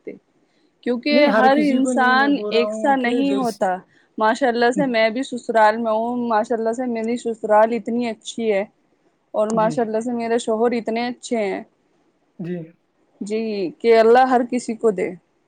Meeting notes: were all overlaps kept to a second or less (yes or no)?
no